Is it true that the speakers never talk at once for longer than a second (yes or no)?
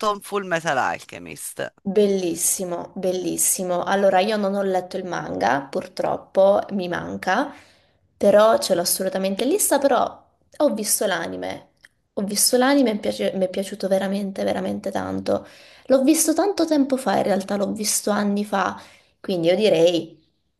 yes